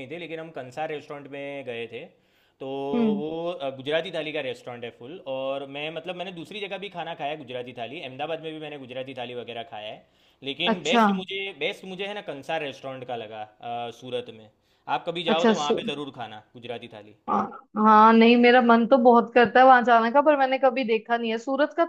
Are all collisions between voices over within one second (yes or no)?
yes